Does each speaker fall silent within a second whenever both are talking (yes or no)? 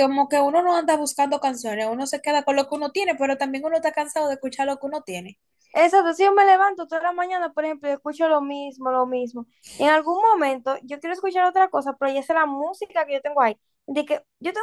yes